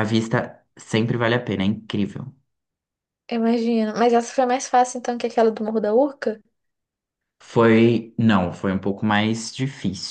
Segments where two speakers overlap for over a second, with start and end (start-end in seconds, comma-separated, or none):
none